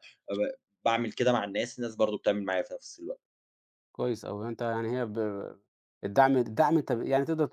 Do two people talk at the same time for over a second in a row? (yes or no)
no